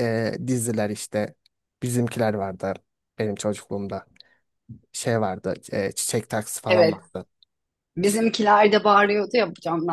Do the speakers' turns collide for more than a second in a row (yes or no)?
no